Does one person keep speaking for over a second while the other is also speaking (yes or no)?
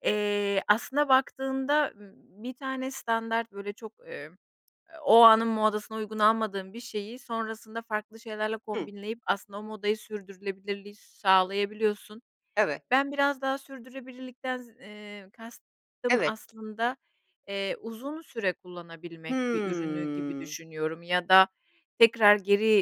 yes